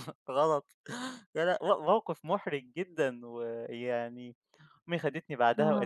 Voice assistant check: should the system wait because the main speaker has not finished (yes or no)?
yes